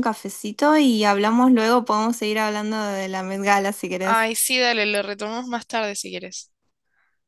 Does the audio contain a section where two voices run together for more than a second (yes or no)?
no